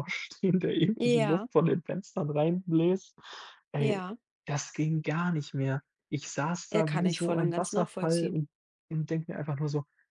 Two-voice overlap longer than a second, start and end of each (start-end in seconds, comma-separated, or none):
6.7-8.4